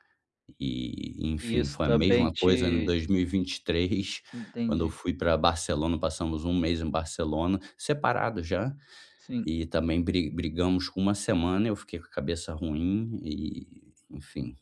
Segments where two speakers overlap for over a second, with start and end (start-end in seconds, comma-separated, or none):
1.4-3.0